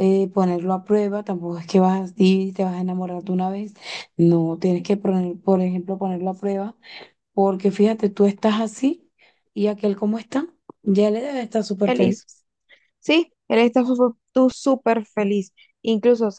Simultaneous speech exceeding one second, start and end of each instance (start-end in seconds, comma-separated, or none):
none